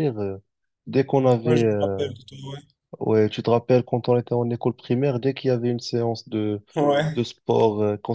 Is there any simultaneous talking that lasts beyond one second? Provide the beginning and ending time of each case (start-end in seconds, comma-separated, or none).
none